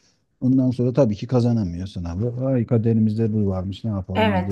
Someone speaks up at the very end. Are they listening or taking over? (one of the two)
taking over